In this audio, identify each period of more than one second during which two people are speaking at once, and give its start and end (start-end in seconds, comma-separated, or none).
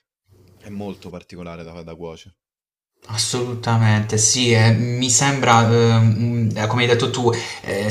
none